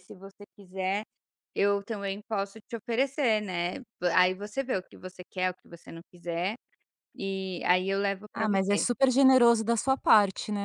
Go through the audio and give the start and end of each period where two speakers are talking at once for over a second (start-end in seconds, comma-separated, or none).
none